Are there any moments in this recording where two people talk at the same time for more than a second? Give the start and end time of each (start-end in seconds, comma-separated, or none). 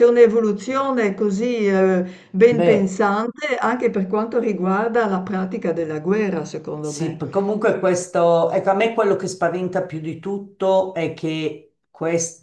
none